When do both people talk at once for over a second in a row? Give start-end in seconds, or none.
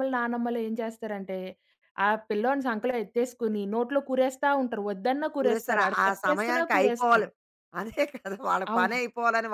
5.4-7.3